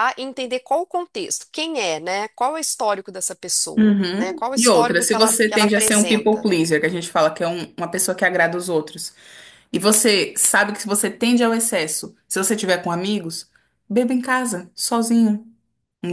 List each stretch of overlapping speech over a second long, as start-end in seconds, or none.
3.8-6.5